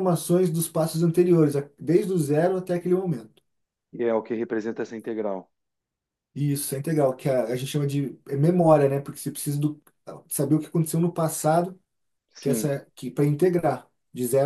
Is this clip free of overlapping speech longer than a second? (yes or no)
yes